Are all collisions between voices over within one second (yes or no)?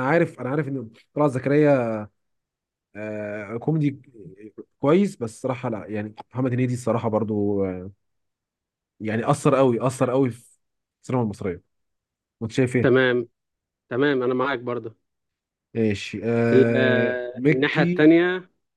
no